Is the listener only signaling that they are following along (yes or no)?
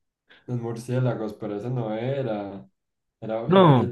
yes